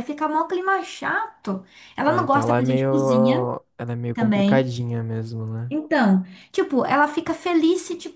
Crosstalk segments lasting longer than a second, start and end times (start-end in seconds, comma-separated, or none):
2.0-3.5